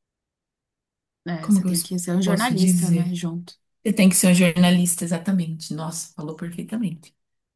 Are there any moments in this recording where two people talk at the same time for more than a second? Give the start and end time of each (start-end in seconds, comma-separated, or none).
1.4-3.1